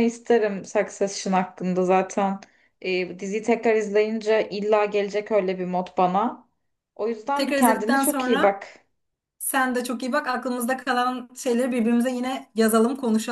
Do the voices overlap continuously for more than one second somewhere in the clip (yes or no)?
yes